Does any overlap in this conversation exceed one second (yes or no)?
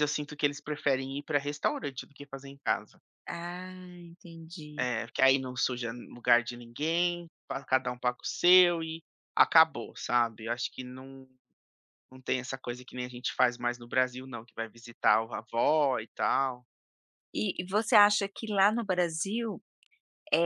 no